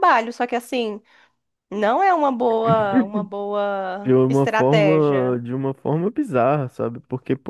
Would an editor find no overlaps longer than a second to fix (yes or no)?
no